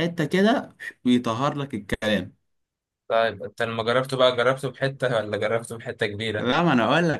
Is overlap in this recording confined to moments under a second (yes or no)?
yes